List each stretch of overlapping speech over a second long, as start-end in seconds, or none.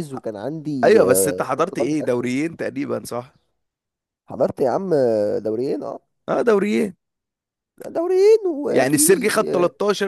0.8-2.3